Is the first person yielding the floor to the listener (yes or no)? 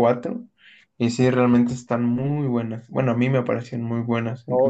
yes